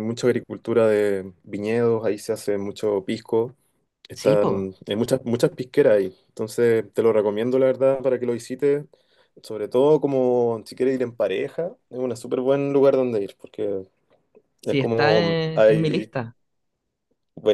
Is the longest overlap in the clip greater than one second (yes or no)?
yes